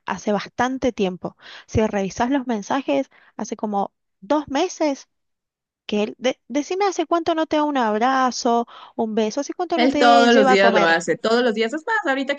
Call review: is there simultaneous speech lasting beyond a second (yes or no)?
yes